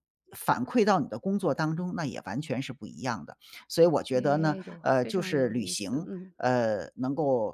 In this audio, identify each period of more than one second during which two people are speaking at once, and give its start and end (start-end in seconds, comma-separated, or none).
4.1-6.3